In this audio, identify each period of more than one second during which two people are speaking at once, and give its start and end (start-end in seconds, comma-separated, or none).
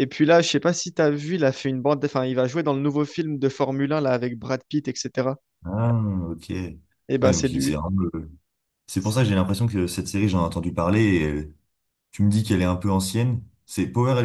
none